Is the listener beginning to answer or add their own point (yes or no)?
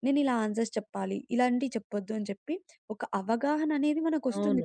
yes